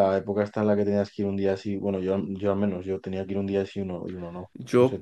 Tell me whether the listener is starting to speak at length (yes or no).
yes